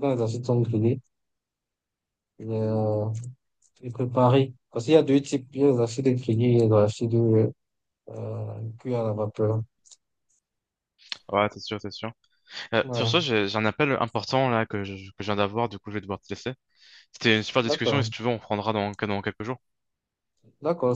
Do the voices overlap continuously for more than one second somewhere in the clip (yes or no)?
no